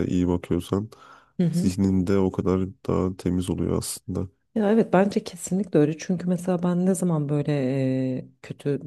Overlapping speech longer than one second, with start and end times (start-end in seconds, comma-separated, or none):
none